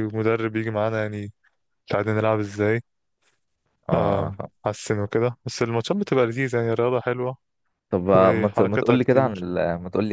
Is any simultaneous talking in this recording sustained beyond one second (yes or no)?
yes